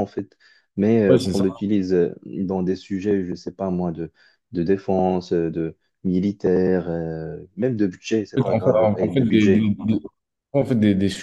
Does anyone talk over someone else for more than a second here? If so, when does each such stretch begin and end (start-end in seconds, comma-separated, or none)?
8.5-9.7